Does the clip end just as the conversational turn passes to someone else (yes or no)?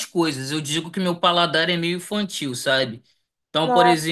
no